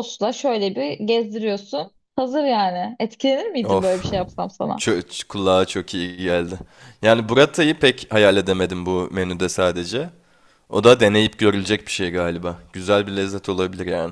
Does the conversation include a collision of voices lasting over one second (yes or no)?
no